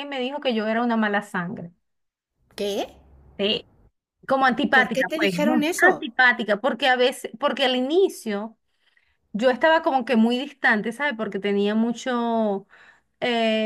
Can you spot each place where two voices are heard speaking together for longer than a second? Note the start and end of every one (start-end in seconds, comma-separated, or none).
4.7-6.1